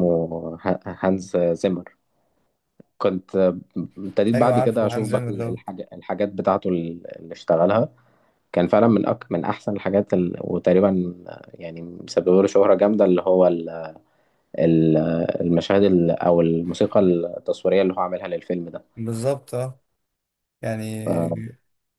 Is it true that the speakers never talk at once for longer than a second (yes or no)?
no